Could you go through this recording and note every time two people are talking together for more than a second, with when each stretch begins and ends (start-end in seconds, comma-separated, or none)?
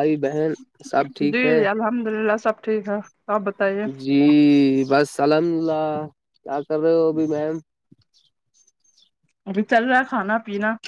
none